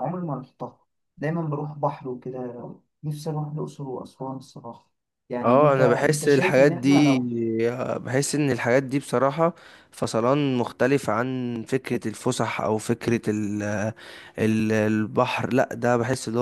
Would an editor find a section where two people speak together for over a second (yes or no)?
yes